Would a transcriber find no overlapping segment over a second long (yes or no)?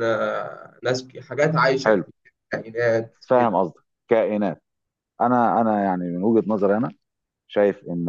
yes